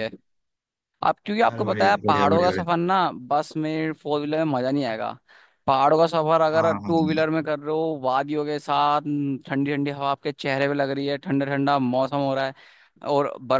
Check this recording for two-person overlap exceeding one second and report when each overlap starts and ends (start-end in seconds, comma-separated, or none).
1.5-2.7